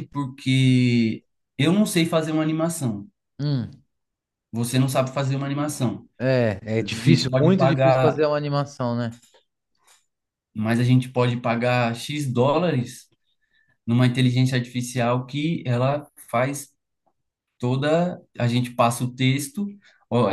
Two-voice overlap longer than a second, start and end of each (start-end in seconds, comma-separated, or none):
6.8-8.2